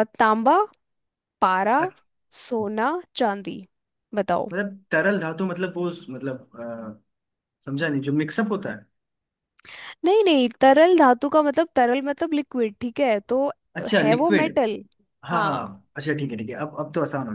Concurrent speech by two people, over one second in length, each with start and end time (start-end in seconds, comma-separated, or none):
none